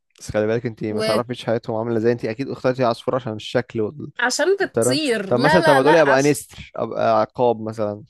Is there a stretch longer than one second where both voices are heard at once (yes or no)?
yes